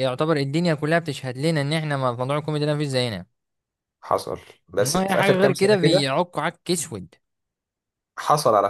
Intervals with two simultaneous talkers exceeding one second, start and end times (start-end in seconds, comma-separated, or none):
4.8-6.1